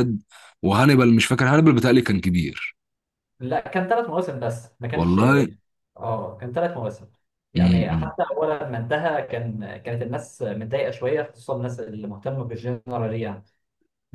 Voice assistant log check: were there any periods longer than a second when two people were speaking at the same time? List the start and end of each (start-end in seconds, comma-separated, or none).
none